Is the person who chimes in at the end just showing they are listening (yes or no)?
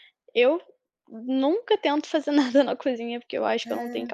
yes